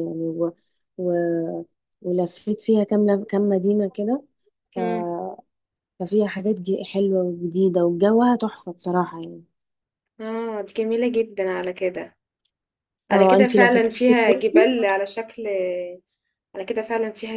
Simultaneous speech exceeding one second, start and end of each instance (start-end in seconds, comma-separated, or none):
13.1-14.7